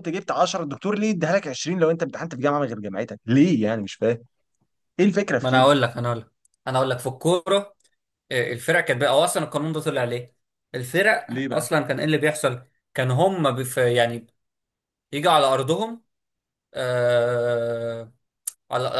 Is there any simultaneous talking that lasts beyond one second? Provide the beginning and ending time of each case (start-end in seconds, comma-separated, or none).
none